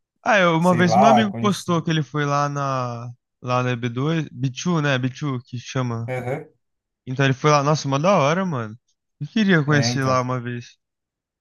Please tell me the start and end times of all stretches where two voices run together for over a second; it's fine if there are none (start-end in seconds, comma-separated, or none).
0.6-1.9